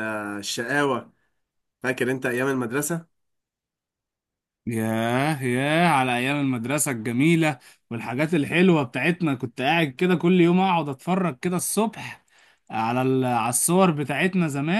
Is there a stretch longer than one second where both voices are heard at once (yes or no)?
no